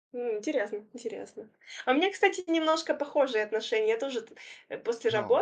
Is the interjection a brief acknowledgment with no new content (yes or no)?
yes